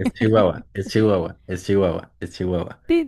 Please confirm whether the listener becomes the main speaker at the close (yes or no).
yes